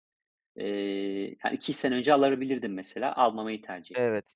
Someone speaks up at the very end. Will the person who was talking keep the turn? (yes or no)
yes